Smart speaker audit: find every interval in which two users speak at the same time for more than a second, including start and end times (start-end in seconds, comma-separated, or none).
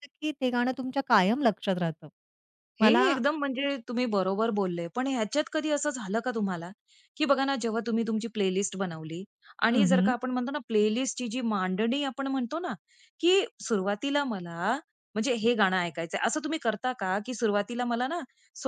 none